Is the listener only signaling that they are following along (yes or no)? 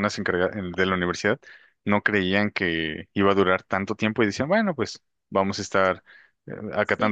yes